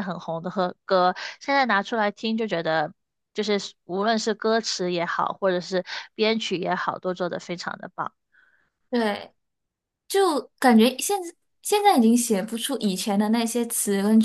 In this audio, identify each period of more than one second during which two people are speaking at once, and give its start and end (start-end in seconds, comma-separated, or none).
none